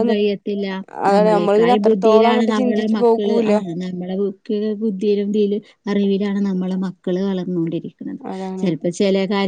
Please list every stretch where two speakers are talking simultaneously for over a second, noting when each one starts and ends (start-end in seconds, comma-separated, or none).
1.1-3.5